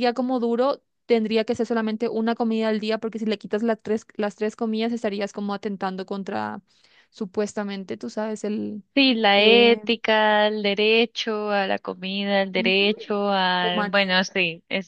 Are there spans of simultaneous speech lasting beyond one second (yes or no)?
no